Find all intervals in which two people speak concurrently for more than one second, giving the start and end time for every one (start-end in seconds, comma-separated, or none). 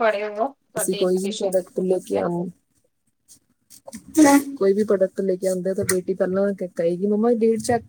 0.8-2.2